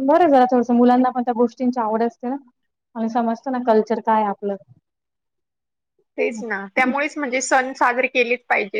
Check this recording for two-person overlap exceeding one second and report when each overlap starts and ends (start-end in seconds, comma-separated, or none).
none